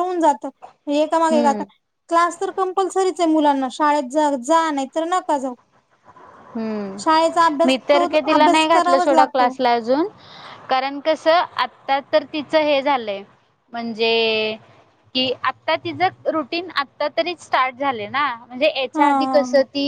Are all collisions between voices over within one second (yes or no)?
no